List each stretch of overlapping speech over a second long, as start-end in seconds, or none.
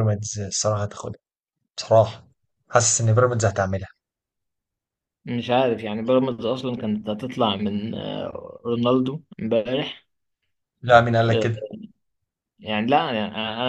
none